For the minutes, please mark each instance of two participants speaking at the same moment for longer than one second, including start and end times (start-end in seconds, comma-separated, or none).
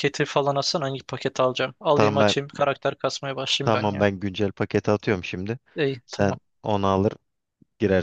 none